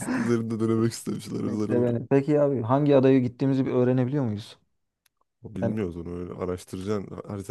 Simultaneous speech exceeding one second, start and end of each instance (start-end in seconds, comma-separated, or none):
none